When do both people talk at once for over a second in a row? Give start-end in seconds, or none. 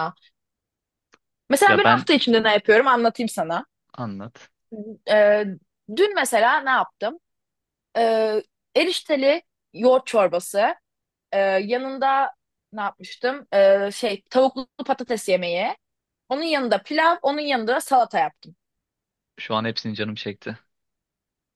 none